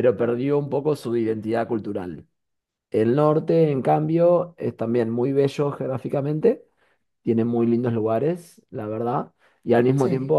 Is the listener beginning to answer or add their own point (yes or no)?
no